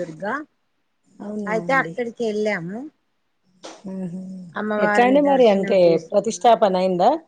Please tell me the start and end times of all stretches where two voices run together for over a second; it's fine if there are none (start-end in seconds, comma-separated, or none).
4.8-6.5